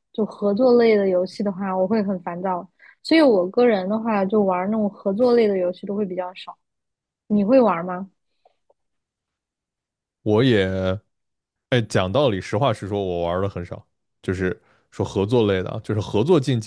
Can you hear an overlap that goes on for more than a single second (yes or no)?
no